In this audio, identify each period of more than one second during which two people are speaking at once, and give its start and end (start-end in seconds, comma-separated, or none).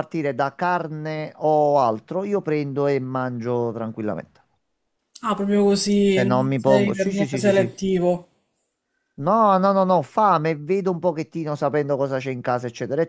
6.1-7.8